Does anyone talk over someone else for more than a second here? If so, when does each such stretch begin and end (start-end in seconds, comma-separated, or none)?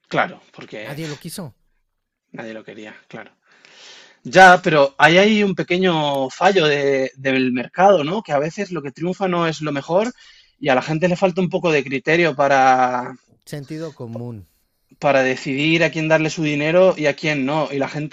none